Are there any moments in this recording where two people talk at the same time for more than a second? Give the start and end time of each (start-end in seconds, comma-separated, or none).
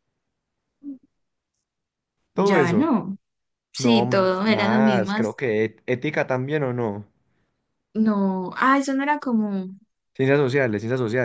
3.8-5.4